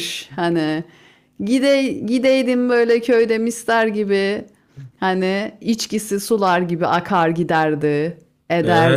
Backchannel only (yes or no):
no